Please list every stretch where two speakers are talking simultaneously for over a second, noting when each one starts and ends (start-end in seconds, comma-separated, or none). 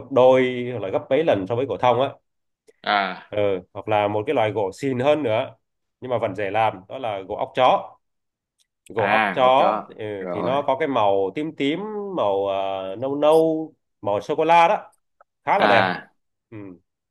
9.0-10.6